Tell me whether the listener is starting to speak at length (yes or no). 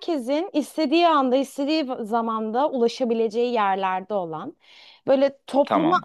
no